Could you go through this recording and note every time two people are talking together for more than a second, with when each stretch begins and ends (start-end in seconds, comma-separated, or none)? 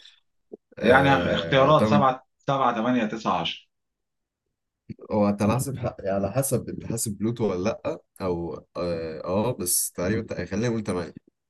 0.8-2.0